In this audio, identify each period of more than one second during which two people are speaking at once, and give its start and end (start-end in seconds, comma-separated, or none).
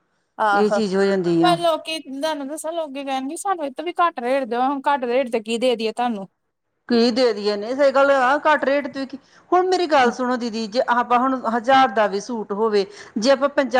none